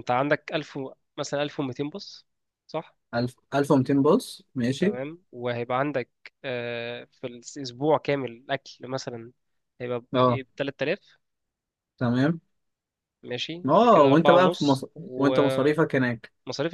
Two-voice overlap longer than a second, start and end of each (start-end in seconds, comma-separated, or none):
13.7-15.3